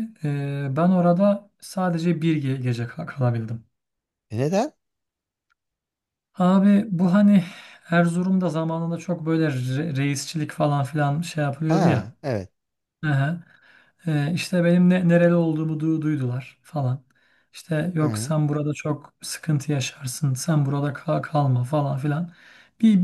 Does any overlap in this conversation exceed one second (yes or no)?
no